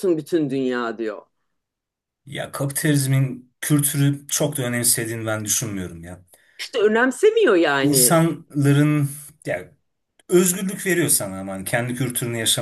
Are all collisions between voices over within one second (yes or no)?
yes